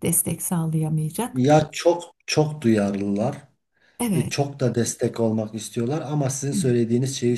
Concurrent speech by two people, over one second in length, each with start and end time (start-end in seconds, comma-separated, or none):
none